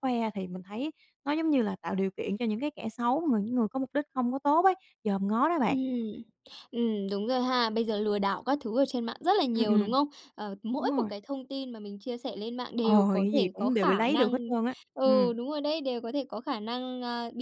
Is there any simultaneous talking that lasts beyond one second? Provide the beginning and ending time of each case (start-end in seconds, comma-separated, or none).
12.8-14.3